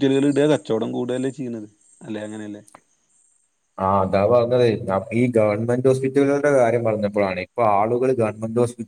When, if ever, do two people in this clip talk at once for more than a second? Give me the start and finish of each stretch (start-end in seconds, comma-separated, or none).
none